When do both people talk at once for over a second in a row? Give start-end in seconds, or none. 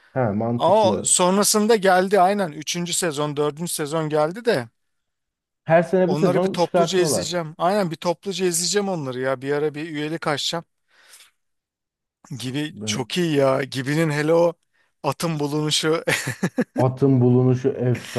6.0-7.4